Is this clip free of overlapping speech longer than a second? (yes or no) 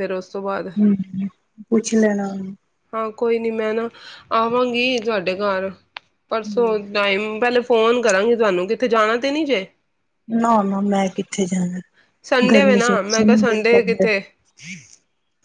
no